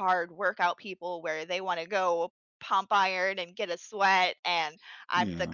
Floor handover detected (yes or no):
no